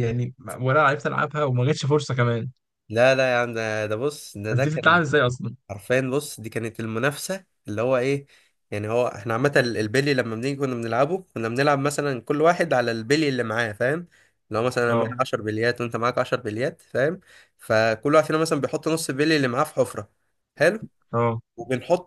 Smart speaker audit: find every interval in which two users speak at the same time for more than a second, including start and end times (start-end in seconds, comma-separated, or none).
none